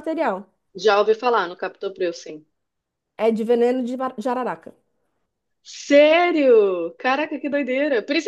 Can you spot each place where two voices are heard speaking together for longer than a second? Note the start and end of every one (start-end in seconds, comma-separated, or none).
none